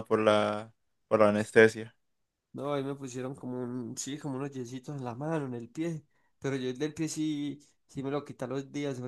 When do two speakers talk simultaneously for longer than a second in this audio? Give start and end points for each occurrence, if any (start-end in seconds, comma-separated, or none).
none